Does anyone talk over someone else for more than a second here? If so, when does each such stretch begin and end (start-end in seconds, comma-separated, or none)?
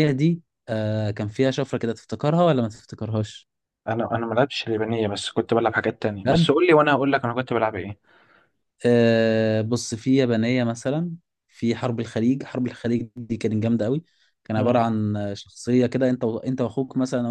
none